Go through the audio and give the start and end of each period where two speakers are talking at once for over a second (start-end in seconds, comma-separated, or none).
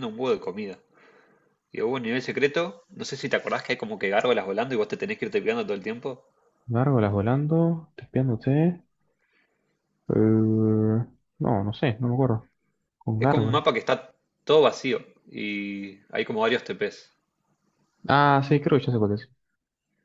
none